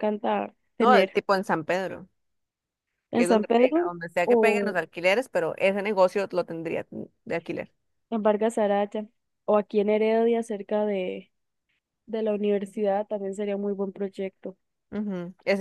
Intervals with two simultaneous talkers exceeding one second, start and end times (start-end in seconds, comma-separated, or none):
3.1-4.8